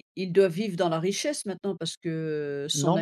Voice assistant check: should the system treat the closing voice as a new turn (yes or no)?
yes